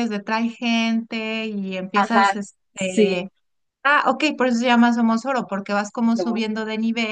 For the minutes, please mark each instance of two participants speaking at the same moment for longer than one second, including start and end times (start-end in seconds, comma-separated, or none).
1.9-3.3